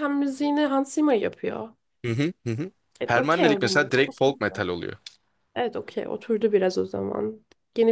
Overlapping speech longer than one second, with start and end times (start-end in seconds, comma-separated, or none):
3.0-4.7